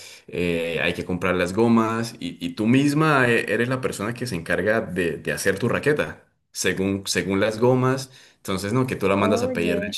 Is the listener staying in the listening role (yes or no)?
yes